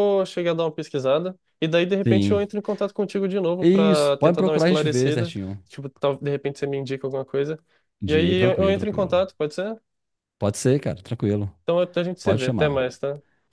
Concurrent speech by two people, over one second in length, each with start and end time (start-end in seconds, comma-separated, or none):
3.6-5.6, 8.1-9.3